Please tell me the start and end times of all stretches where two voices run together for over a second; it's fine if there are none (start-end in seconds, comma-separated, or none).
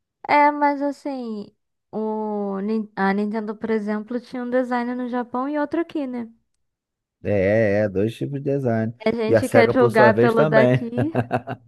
9.1-10.8